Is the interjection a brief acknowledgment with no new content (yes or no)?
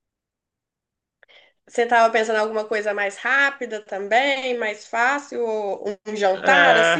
no